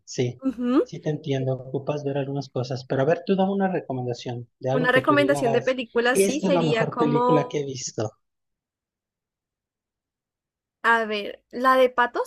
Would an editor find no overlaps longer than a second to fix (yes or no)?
no